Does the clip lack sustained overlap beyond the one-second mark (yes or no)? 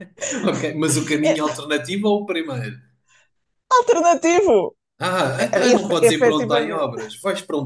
no